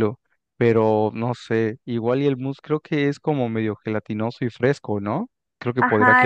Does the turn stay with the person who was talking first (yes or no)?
no